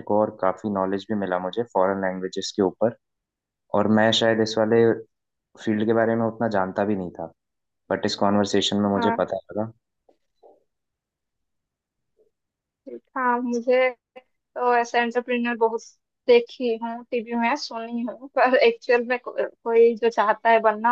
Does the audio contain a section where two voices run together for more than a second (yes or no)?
no